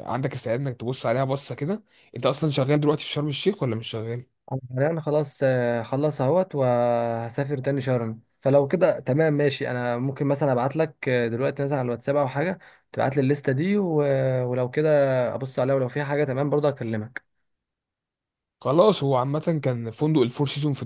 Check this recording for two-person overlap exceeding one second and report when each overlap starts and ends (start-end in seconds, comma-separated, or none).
none